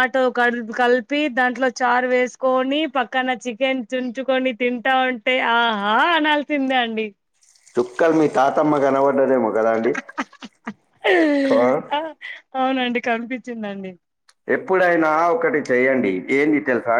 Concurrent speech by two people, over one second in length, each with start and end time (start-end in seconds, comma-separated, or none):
none